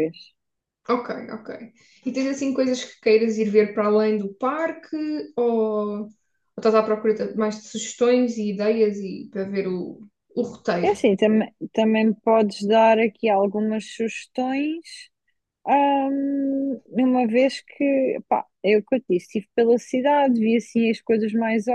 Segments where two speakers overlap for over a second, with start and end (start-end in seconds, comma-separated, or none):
none